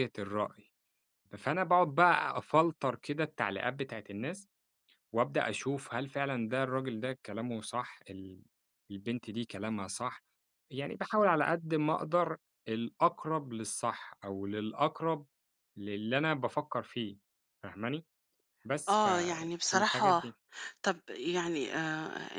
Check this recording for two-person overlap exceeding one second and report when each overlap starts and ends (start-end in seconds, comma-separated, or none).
18.9-20.2